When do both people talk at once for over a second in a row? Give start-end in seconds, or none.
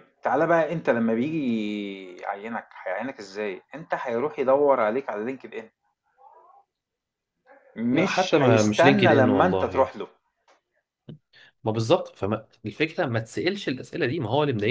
7.9-9.9